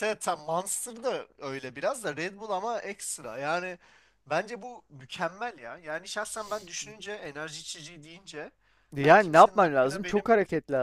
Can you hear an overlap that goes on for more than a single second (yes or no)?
yes